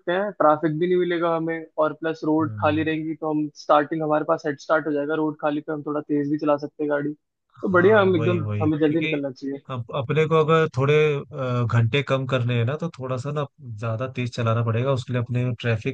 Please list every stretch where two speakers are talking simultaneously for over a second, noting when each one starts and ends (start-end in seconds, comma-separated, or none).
7.7-9.2